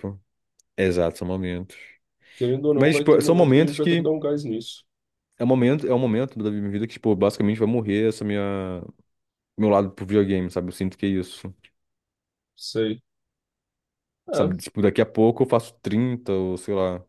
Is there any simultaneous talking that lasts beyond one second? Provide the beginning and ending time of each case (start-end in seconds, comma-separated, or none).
2.8-4.1